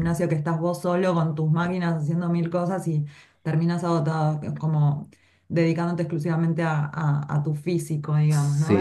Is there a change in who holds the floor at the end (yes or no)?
yes